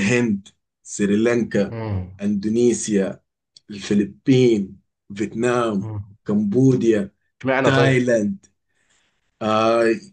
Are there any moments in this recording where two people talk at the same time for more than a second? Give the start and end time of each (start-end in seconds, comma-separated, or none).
none